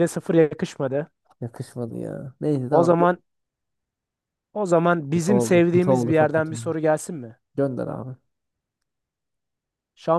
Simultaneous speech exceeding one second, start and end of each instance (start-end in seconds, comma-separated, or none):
5.1-6.6